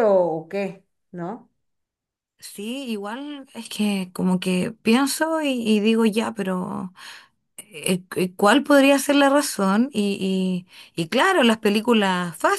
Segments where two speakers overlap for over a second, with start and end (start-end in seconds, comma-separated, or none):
none